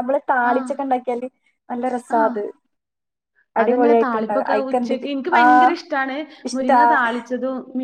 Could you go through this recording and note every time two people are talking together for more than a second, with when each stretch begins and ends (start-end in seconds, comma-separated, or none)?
3.6-5.4